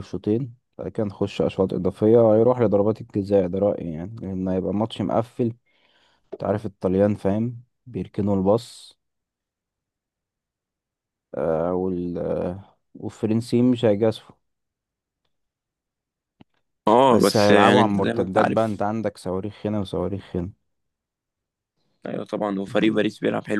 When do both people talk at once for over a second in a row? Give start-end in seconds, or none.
17.1-18.8